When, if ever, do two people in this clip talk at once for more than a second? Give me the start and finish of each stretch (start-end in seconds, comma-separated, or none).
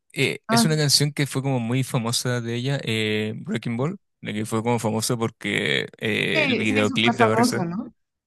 6.3-7.6